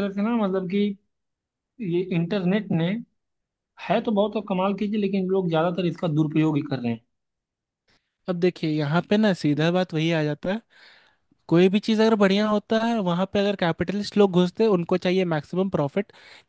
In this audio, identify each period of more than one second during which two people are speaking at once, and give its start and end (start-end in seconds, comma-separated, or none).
none